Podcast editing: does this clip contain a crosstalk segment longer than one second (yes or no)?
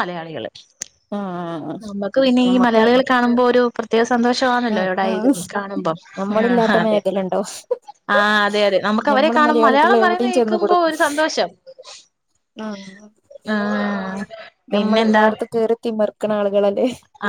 yes